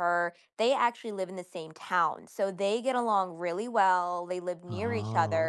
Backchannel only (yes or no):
yes